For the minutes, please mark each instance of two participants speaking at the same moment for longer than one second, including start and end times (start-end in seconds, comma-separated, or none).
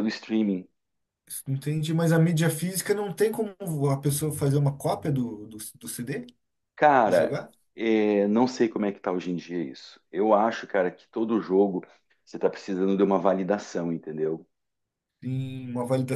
none